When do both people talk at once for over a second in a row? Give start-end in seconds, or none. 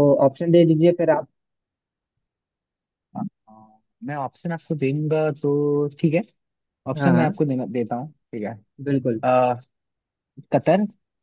none